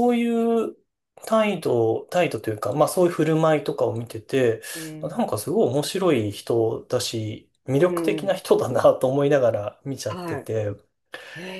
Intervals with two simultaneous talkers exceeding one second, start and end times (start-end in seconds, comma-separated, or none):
none